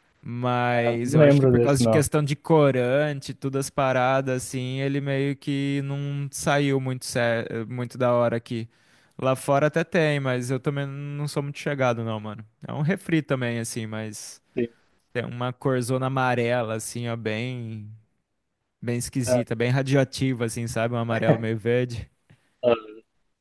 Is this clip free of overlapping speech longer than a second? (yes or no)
no